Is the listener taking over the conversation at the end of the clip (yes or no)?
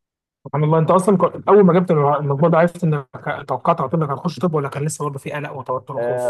yes